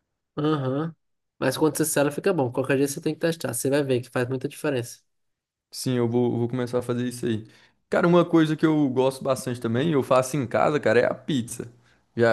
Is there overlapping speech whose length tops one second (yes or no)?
no